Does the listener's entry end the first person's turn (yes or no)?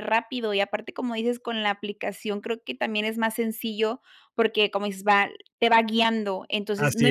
no